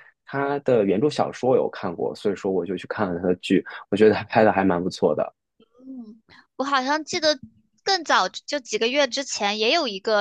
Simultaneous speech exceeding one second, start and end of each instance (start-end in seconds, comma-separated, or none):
none